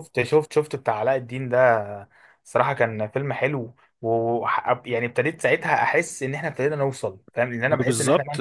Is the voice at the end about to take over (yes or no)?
yes